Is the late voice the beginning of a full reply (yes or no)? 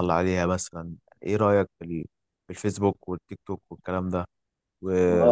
yes